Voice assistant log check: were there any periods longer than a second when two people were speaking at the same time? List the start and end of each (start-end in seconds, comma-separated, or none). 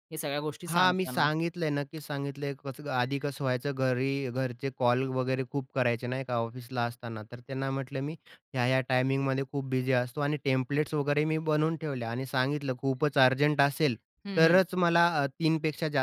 none